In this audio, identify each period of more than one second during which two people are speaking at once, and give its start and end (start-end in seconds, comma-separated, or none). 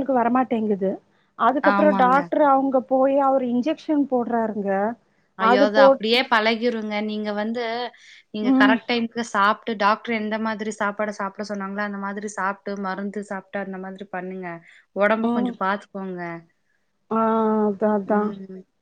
none